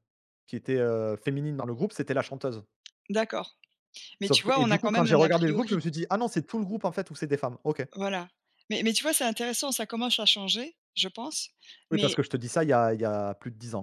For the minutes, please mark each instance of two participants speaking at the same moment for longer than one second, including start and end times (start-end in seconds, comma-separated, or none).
4.2-5.8